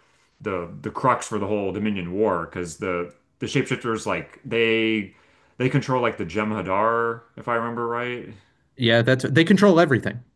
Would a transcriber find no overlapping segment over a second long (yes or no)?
yes